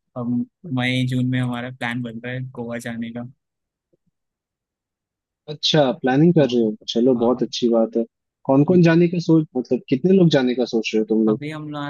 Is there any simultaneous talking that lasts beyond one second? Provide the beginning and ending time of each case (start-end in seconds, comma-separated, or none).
none